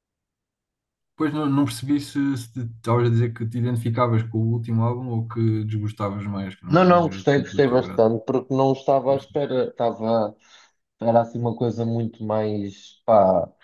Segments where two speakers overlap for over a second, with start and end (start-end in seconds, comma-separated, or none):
6.7-8.0